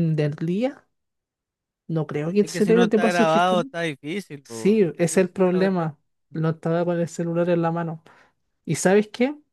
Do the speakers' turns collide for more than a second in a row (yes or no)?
yes